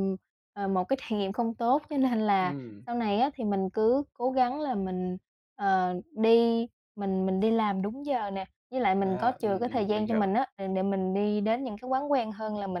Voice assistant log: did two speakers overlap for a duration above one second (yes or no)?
yes